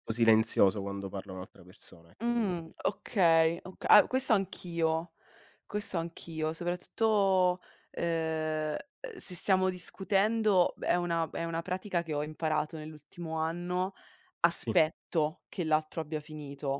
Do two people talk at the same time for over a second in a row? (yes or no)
no